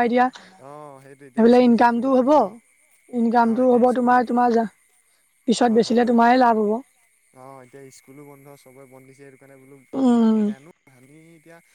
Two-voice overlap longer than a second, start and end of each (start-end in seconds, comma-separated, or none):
0.7-2.3